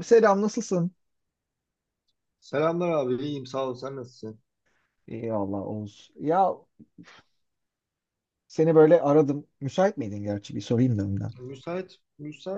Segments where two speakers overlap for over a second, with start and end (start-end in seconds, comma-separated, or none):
none